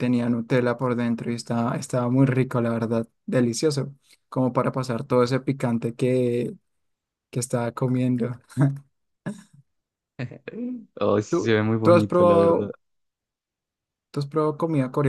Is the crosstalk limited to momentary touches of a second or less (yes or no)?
no